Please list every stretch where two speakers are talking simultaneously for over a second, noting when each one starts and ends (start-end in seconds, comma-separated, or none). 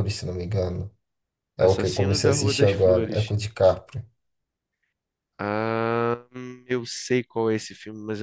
1.6-3.3